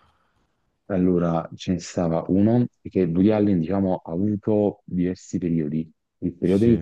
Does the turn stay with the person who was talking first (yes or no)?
yes